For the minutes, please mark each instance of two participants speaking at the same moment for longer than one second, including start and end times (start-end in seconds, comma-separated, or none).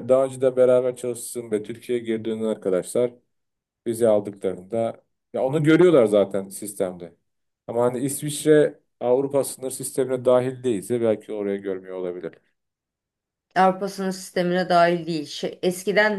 none